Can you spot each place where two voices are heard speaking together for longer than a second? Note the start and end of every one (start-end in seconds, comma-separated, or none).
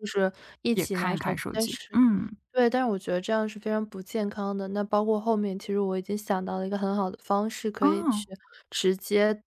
0.7-2.0